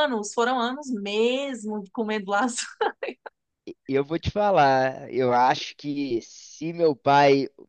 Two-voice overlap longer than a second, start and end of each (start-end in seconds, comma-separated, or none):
none